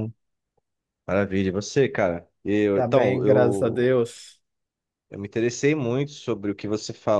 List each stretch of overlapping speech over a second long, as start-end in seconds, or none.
2.7-4.0